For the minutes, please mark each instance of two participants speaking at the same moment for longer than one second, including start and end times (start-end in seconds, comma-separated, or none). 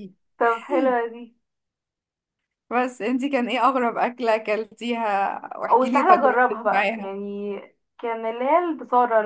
5.7-7.1